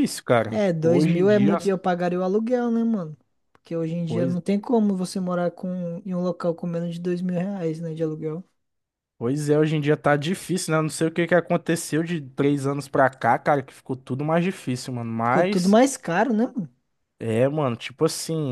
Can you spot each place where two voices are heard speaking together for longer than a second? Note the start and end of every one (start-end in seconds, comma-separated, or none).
0.5-1.7